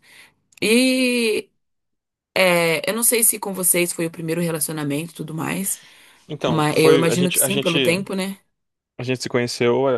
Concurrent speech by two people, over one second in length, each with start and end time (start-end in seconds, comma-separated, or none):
6.5-7.8